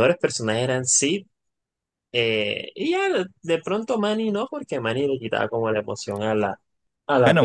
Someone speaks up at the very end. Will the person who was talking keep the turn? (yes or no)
no